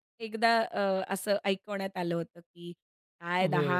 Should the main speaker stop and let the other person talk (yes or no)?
no